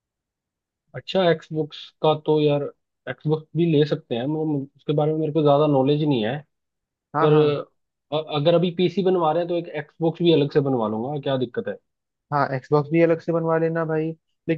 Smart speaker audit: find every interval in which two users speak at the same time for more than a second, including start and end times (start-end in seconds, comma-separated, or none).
none